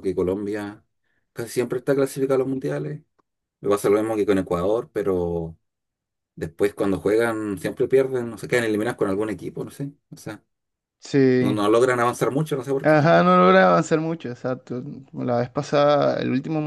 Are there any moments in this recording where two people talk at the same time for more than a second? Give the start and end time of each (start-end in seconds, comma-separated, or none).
none